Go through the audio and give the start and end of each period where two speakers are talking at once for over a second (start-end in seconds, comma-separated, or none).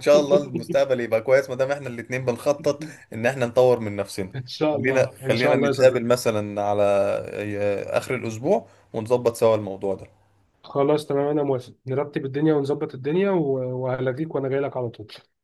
4.7-6.1